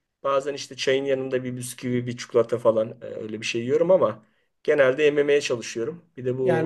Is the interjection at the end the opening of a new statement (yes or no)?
yes